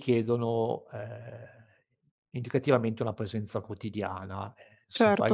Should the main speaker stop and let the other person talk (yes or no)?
yes